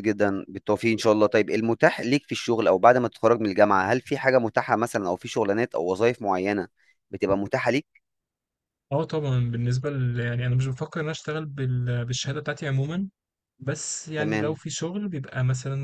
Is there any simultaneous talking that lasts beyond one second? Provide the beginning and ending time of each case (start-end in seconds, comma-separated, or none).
none